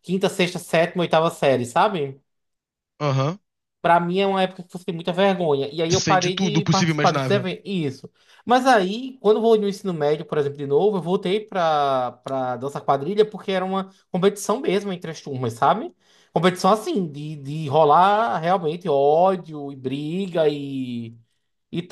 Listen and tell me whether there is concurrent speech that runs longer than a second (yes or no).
yes